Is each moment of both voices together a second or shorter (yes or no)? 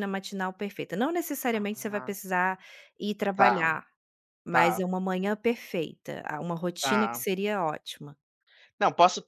yes